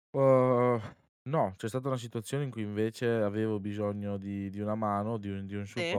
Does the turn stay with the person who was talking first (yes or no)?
yes